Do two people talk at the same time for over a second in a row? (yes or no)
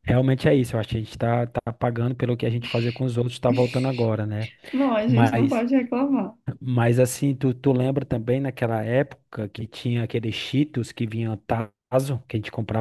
no